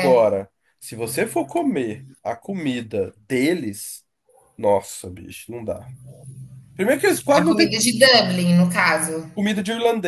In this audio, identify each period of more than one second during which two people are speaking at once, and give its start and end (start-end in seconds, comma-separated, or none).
none